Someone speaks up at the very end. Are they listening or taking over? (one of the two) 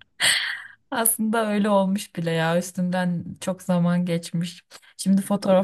listening